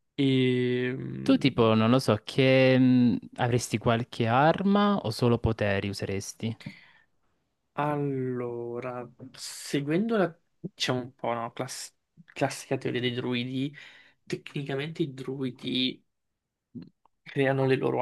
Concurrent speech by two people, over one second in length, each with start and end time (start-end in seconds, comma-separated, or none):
none